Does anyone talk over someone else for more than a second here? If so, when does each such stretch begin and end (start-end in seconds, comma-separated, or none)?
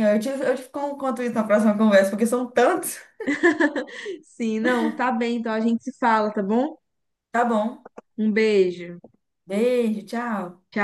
none